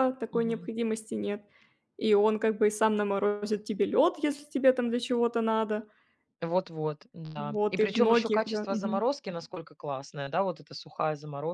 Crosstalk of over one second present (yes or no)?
yes